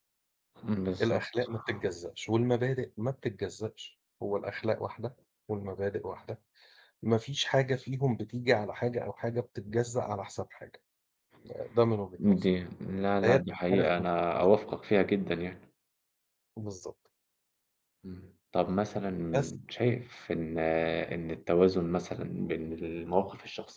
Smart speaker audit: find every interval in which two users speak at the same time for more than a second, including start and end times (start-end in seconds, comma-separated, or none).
13.2-14.7